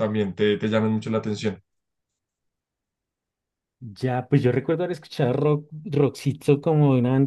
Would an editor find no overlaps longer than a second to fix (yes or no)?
yes